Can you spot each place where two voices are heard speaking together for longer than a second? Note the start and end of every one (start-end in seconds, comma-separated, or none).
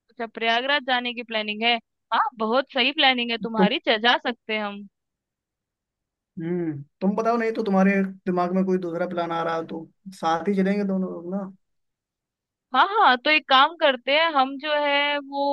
none